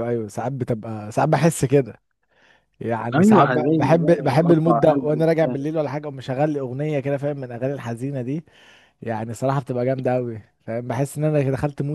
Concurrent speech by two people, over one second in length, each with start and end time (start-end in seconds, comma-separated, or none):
3.1-5.5